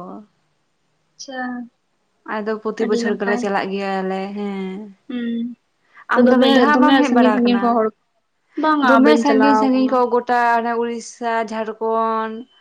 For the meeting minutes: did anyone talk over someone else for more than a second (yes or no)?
yes